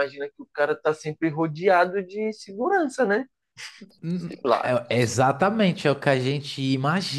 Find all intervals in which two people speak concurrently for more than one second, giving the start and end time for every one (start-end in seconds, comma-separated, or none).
none